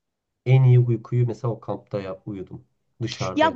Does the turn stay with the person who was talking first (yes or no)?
no